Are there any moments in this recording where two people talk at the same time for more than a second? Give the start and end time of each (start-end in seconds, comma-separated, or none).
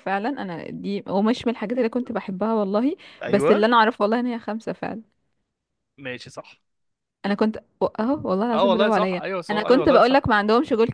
8.5-10.2